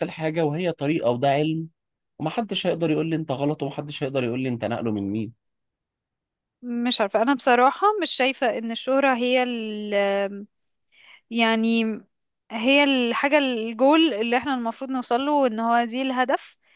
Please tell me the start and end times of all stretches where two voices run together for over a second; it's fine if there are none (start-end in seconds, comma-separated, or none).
none